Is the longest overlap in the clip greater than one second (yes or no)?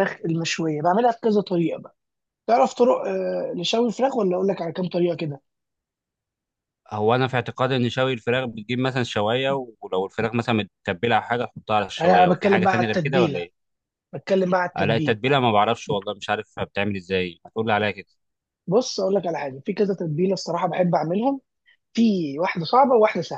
yes